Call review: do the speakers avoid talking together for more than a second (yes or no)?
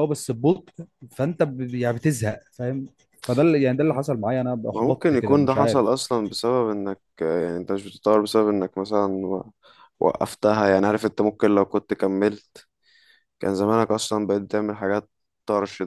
no